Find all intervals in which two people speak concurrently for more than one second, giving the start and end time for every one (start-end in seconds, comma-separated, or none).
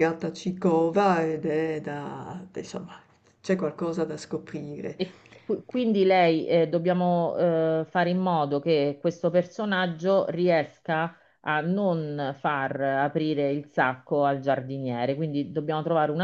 none